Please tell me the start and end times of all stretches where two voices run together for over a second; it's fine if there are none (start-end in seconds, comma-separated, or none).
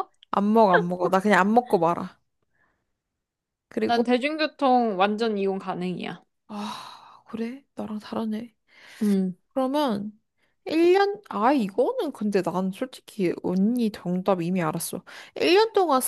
none